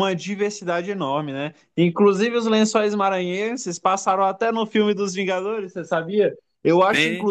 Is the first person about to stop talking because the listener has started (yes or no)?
no